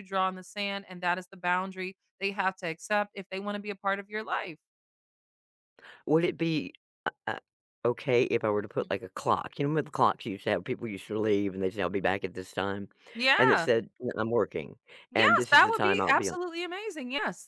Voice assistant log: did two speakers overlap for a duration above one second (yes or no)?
yes